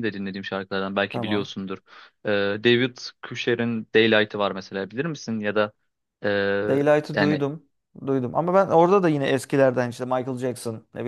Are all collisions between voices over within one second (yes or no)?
yes